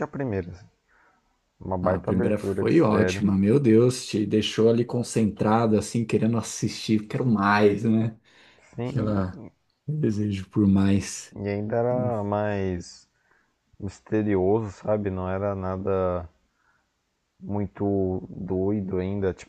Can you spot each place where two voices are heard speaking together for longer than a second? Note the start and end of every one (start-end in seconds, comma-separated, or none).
1.8-3.3